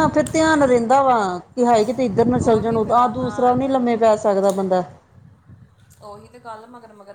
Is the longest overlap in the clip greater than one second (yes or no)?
yes